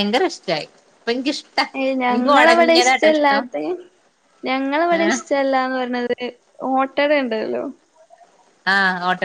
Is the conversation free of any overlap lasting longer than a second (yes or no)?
no